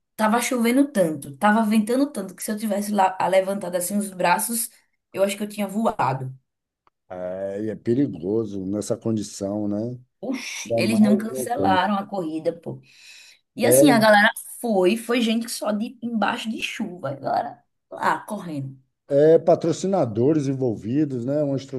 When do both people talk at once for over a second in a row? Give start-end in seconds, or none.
10.7-11.9